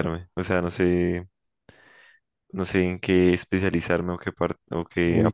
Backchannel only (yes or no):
no